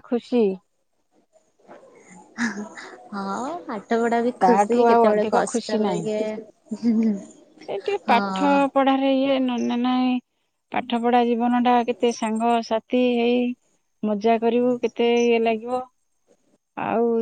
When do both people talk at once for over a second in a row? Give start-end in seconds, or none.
4.4-6.0